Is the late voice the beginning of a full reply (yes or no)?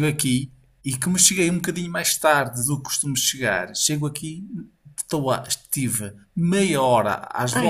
no